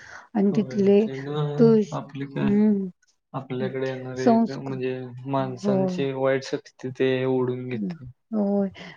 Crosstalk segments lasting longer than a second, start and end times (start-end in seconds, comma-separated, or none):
none